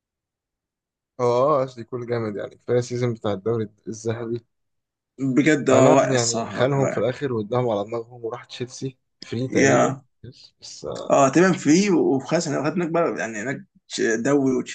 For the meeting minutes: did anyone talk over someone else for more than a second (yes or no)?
yes